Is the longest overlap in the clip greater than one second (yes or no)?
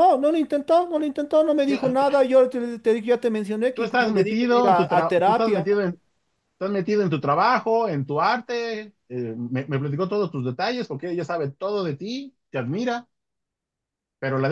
yes